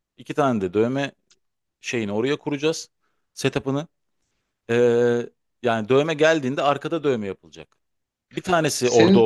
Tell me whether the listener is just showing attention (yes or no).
yes